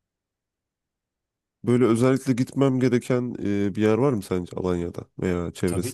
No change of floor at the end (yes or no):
no